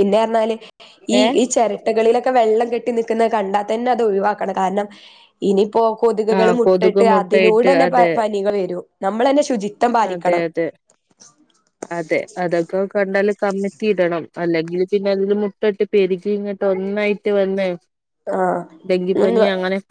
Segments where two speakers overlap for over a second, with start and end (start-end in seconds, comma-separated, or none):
6.4-8.1